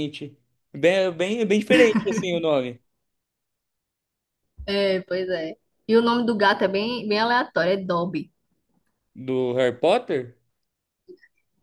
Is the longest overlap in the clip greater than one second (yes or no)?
no